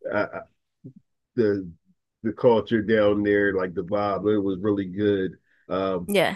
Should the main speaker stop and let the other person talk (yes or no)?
no